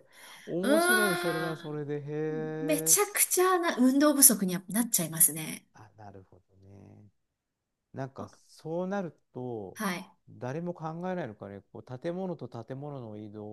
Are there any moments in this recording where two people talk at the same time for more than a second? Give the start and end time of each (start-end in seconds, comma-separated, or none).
0.6-1.8